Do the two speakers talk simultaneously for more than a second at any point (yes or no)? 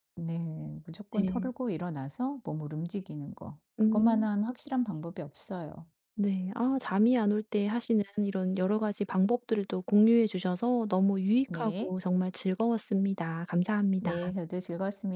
no